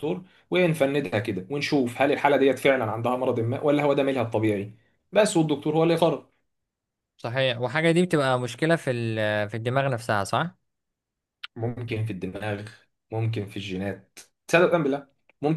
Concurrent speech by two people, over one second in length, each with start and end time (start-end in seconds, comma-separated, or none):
none